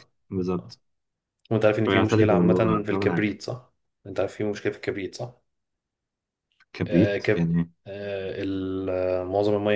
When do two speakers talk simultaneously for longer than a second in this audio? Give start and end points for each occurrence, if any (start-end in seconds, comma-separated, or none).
1.9-3.2